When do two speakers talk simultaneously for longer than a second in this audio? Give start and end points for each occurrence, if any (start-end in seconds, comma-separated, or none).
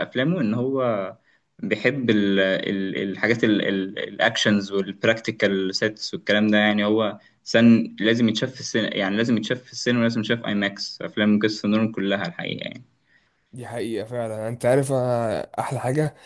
none